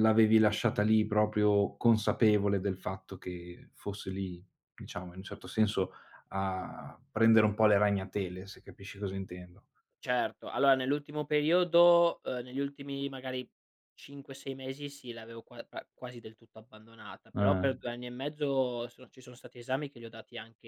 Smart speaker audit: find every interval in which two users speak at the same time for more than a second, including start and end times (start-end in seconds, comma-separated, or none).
none